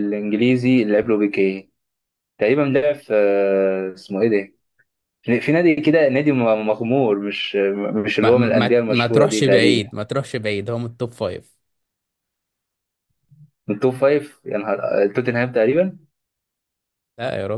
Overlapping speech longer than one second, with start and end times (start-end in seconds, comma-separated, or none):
8.2-9.9